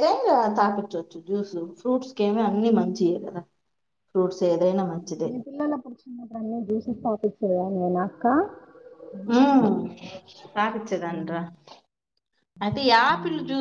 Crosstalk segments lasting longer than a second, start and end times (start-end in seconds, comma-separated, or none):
none